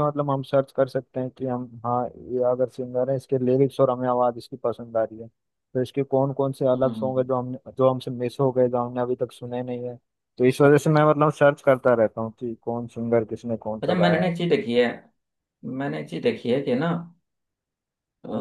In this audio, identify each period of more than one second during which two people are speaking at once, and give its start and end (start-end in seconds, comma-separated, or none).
none